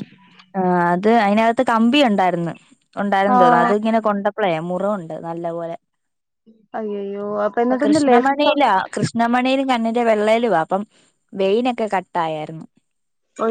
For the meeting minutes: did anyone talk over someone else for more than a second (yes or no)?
no